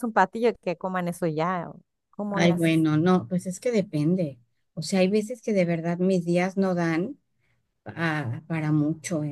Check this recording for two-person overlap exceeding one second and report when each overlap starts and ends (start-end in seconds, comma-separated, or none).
none